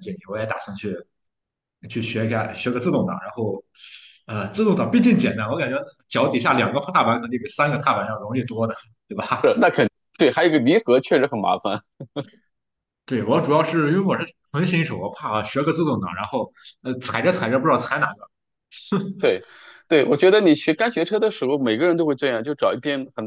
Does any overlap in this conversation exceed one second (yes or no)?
no